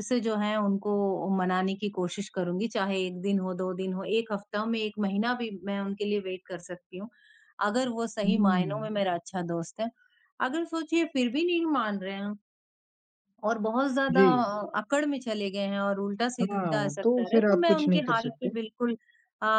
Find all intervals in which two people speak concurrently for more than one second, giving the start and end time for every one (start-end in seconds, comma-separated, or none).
16.4-18.5